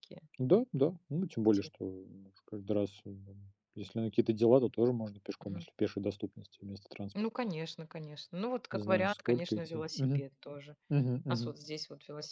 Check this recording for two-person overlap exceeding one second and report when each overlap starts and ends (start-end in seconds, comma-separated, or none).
8.7-10.2